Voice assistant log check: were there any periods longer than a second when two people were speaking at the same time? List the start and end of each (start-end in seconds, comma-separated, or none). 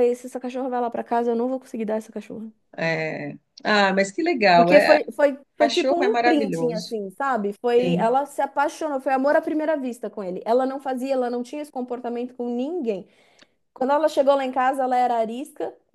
5.6-7.0